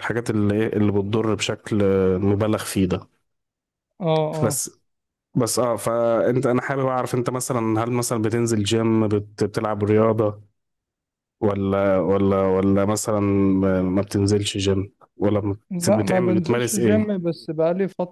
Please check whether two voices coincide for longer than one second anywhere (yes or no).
yes